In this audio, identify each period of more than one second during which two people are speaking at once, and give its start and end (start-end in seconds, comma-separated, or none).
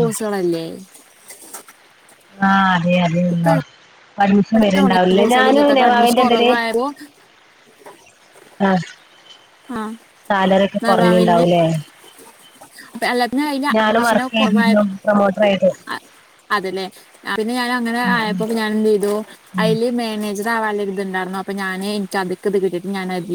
4.4-6.5